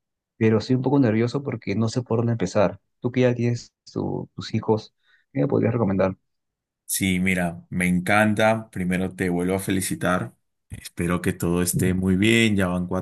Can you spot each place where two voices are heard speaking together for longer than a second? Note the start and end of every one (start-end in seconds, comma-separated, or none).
none